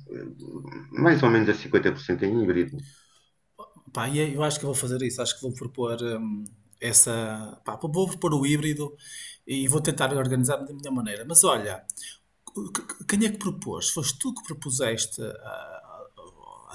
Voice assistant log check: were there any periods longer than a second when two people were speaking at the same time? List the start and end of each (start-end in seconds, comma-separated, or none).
none